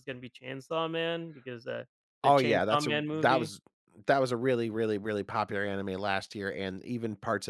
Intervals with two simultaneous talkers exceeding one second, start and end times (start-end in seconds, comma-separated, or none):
2.2-3.5